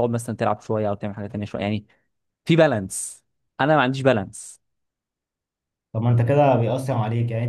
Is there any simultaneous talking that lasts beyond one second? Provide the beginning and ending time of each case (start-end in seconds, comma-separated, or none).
none